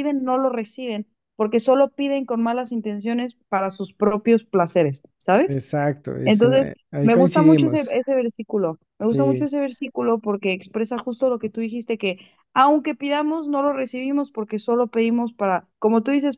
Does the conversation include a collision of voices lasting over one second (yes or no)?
yes